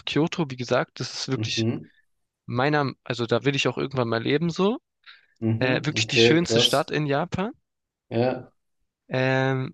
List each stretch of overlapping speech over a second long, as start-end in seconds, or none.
5.6-6.9